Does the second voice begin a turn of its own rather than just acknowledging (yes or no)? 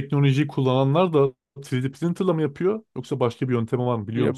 yes